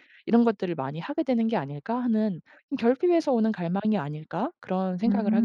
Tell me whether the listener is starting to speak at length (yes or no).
yes